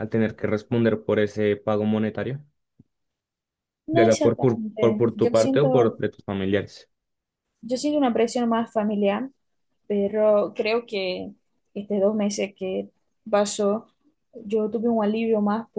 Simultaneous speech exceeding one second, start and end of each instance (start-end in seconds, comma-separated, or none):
3.9-6.0